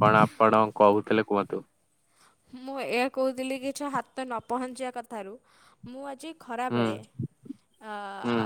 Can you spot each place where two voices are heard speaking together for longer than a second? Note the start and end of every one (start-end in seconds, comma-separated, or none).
none